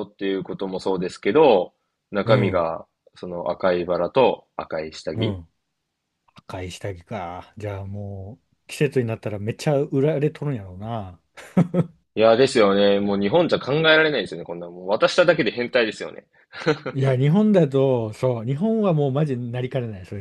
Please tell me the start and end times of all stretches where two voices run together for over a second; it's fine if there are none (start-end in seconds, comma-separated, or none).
none